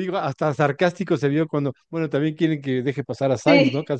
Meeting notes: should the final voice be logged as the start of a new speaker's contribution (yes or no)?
yes